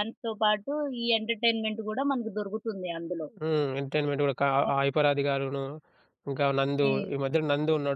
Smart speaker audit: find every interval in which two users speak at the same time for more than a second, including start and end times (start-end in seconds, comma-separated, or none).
none